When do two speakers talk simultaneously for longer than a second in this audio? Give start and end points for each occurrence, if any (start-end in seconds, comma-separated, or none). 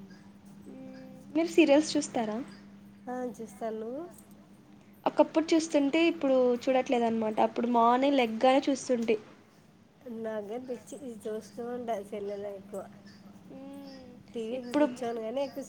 none